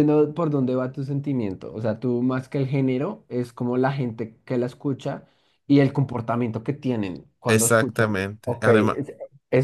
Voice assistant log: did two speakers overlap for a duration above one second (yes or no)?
yes